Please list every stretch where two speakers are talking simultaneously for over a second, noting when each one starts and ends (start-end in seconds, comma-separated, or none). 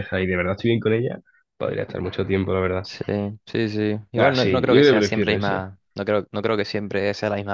4.2-5.7